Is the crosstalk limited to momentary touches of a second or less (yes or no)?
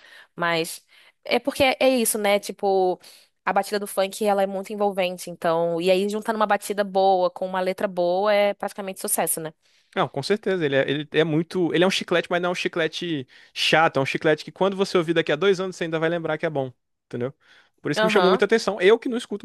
yes